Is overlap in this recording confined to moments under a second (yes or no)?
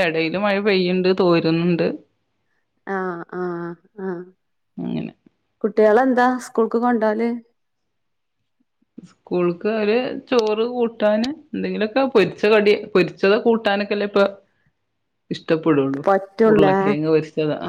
yes